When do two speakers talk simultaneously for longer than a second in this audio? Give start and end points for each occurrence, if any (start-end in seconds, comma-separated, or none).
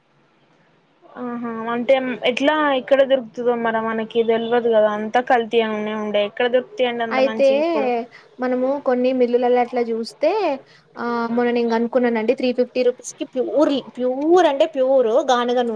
none